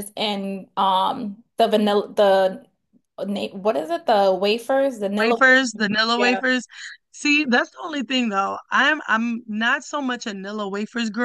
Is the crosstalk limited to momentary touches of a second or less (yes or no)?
yes